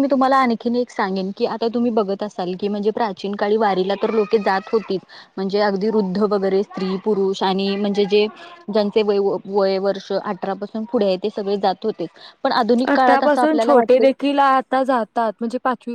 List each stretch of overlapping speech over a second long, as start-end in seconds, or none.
12.9-14.2